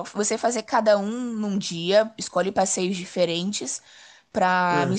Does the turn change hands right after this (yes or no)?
no